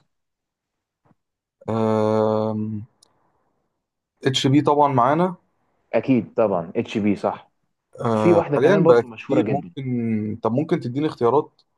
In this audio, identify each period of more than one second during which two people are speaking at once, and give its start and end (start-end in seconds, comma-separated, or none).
8.1-9.7